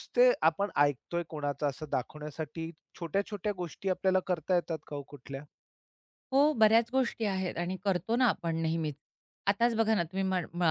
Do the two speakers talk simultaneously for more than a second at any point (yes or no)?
no